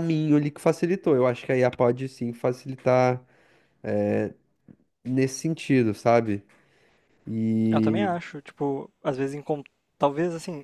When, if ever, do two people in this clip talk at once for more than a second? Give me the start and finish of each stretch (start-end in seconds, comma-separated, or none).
none